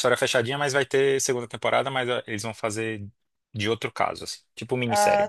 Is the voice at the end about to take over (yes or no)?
yes